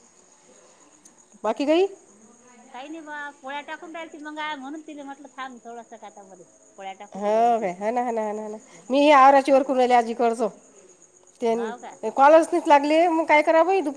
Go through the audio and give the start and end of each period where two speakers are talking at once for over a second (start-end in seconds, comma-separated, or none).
none